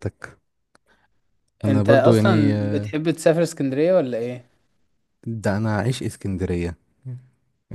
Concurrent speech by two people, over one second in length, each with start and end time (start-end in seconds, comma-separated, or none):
1.7-2.9